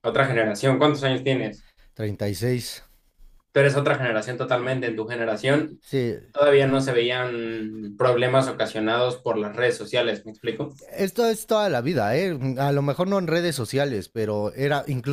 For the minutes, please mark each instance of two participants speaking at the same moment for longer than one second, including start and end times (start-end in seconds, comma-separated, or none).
none